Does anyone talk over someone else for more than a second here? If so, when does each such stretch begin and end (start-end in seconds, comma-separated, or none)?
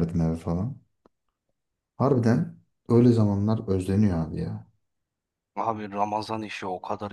none